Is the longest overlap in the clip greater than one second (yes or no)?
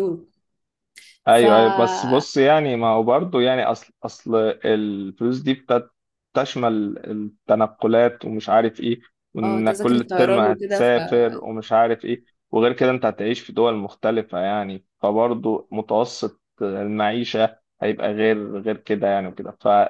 yes